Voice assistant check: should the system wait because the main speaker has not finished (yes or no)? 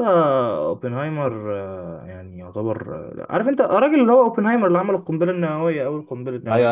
no